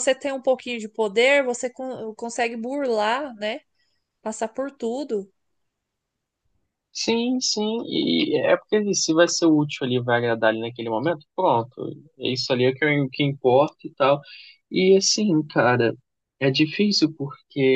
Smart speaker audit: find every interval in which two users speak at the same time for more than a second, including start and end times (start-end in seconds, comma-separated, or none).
none